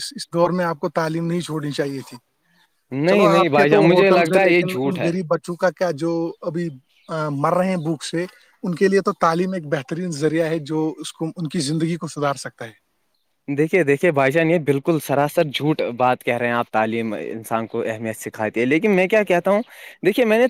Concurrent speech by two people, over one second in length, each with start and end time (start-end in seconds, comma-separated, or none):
3.1-5.1